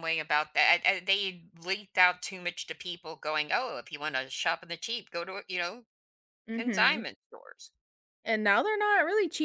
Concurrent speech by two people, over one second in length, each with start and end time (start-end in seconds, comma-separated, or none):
none